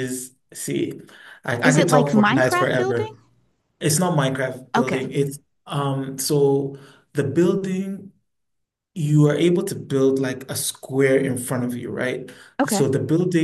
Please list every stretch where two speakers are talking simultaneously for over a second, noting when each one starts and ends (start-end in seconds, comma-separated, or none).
1.6-3.1